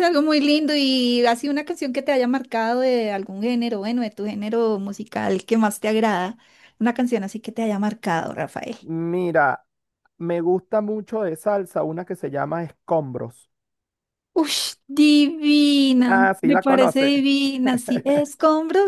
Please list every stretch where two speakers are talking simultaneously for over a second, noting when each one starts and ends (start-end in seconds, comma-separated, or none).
16.1-17.2